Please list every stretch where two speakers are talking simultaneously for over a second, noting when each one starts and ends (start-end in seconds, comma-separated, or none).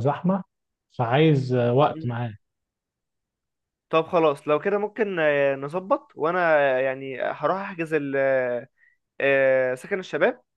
none